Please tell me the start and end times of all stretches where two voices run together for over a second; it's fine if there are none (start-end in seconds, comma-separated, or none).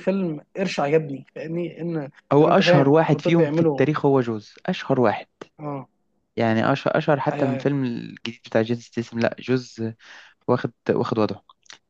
2.3-3.8